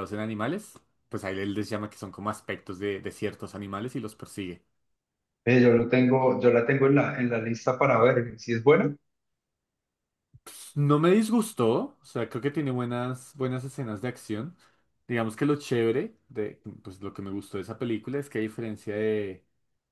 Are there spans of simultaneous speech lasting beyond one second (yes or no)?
no